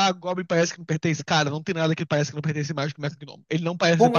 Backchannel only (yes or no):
no